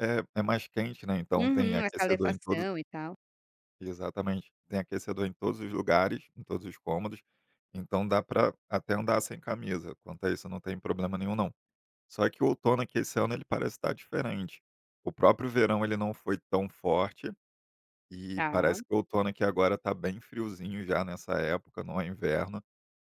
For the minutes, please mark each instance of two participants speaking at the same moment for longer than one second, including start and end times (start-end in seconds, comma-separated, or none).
1.4-2.6